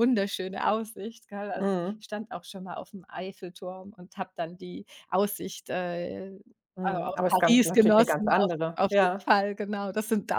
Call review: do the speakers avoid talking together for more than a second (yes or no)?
no